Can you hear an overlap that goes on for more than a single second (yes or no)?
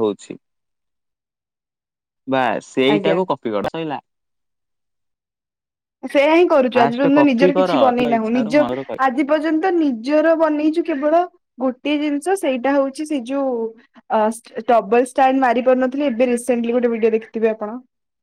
yes